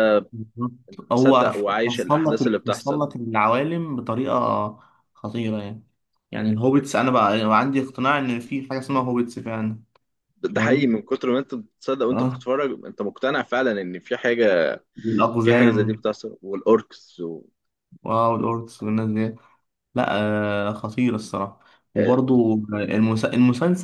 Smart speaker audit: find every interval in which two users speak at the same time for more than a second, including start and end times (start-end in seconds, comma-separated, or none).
1.1-3.0